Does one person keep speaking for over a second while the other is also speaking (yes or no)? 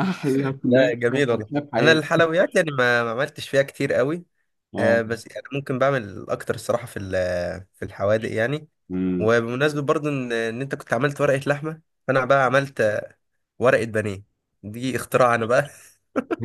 yes